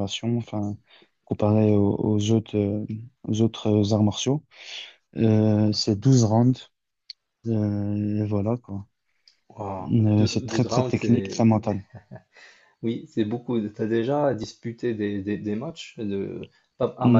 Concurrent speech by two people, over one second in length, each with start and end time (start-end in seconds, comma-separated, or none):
9.9-11.5